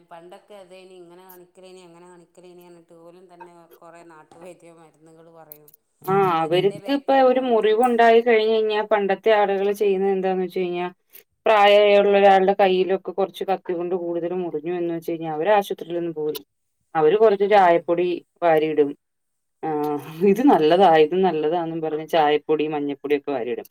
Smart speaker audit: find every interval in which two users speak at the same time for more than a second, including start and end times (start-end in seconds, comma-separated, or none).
6.4-8.0